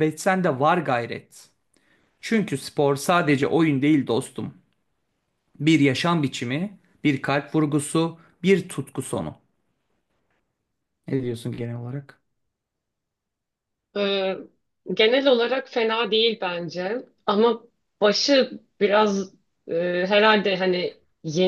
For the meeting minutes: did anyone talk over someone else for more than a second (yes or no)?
no